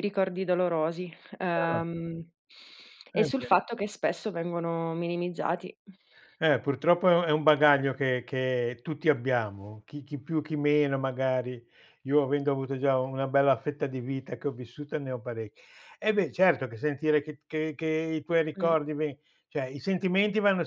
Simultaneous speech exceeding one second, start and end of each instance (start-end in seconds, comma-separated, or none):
none